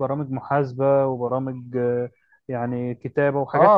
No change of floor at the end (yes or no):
no